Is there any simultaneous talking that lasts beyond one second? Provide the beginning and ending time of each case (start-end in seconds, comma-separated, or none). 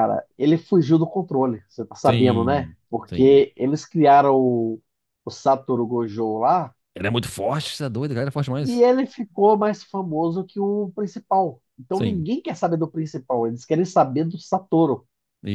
2.0-3.4